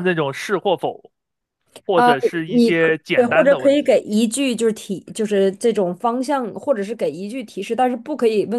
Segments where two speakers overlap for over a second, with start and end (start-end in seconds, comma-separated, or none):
1.9-4.0